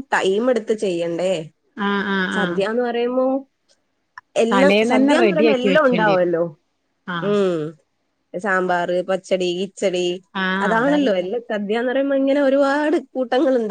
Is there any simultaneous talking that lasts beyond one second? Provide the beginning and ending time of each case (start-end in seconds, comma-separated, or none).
4.5-6.3